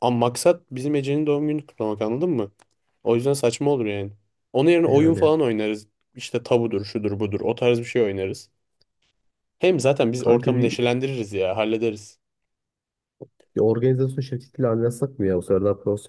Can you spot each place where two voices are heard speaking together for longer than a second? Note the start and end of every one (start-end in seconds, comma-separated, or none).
none